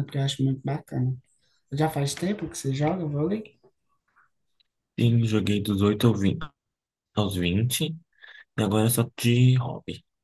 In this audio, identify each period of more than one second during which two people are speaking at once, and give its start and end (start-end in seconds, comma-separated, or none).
none